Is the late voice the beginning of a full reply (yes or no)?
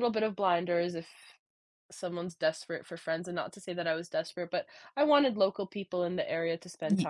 no